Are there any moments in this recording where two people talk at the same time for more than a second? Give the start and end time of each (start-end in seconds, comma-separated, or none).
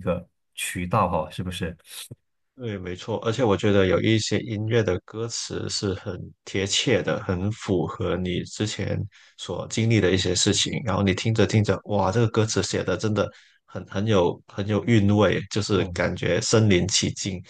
none